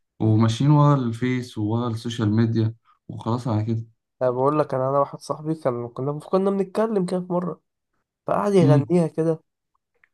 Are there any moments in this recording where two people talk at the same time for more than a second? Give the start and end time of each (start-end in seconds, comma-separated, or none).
none